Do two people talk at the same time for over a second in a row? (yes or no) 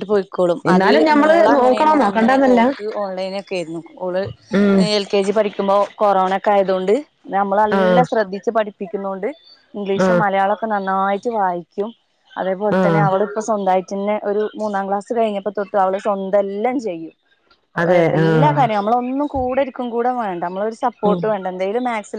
yes